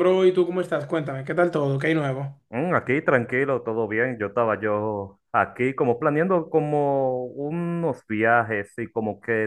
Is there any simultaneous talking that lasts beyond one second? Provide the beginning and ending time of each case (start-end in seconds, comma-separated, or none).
none